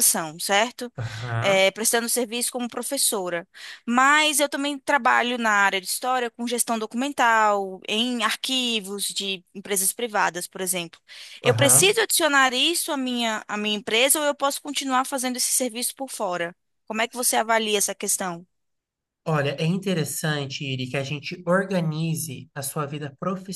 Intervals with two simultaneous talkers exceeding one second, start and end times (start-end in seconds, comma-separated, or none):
none